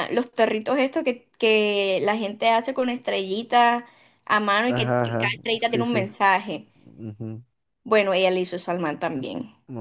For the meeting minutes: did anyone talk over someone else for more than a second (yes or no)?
yes